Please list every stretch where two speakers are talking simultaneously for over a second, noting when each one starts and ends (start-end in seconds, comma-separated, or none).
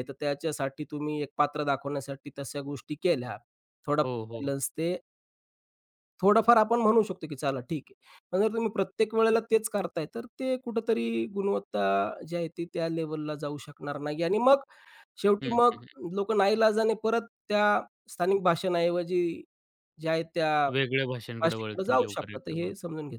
21.4-22.7